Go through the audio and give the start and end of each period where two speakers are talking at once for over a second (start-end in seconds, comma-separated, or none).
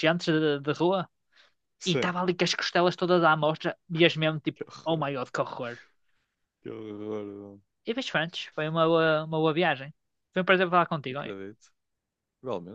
none